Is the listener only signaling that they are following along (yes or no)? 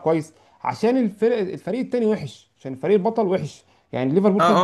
no